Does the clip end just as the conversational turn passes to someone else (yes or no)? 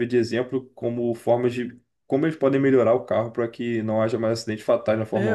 yes